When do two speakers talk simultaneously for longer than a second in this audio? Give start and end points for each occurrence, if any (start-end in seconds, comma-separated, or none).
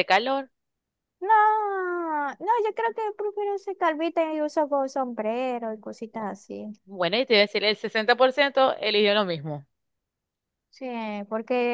none